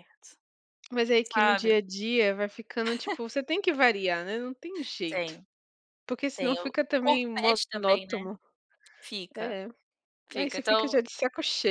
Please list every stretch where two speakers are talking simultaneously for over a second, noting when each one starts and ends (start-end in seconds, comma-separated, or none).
6.3-8.2